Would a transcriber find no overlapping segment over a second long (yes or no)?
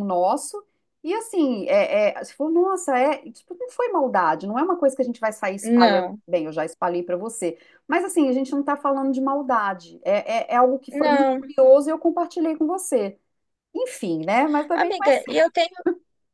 yes